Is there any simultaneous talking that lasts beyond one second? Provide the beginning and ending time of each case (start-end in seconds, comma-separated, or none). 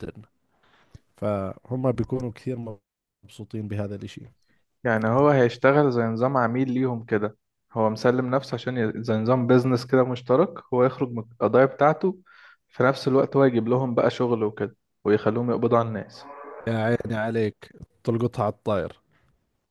none